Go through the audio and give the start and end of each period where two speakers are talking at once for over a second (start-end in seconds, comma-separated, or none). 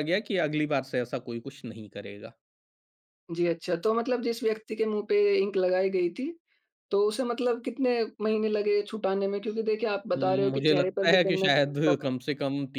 10.1-12.2